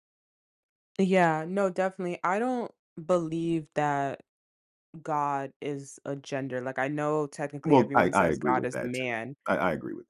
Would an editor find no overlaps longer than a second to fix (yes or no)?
no